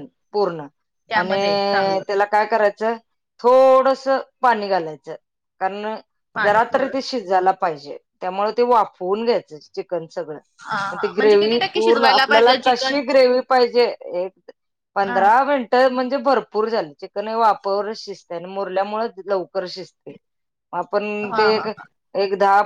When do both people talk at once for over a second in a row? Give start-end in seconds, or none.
10.9-13.0